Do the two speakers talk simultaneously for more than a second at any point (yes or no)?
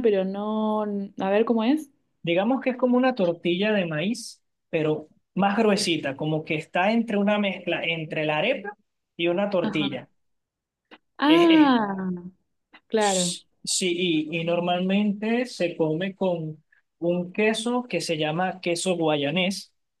no